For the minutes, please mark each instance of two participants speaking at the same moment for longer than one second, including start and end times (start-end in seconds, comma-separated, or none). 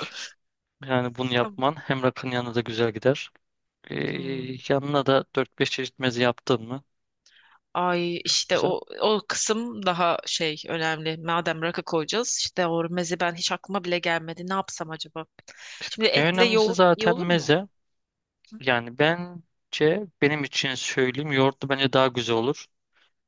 16.1-17.5